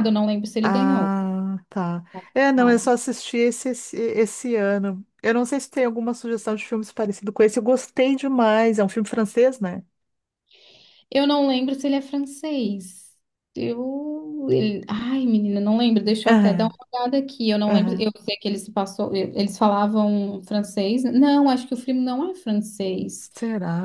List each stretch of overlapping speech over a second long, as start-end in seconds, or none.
none